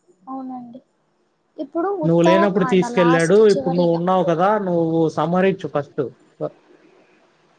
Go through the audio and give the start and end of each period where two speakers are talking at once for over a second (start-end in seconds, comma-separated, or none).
2.1-4.0